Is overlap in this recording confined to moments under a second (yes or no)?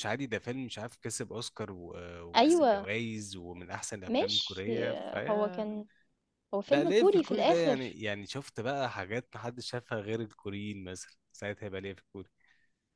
no